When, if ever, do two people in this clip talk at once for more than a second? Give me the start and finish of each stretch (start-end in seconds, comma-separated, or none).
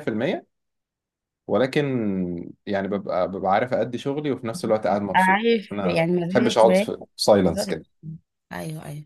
5.2-6.7